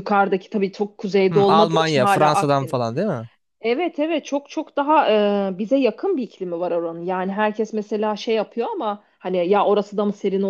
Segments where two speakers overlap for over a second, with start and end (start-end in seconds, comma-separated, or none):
1.3-2.8